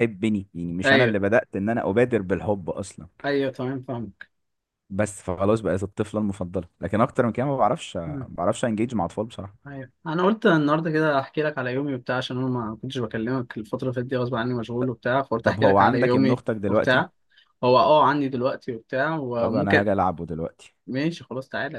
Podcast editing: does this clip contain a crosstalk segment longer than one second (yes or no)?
yes